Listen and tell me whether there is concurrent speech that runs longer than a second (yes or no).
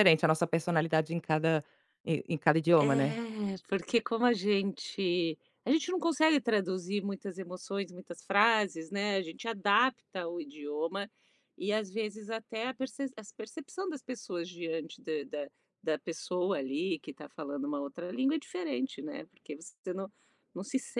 no